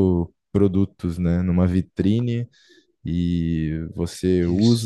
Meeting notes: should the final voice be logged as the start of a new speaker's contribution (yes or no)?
no